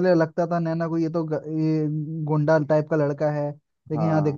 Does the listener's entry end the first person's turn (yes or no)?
no